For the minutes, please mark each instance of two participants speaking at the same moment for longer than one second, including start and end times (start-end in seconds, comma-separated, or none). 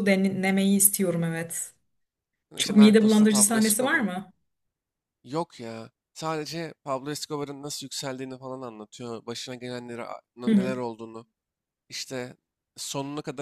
2.6-4.1